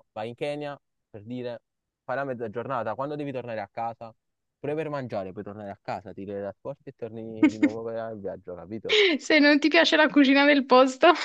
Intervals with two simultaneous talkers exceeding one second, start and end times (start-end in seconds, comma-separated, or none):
none